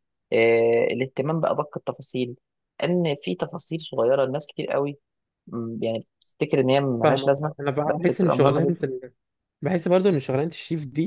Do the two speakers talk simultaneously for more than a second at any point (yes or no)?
yes